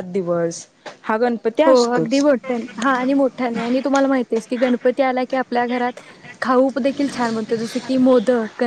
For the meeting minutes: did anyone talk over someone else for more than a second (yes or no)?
no